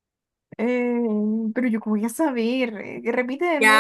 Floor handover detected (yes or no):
yes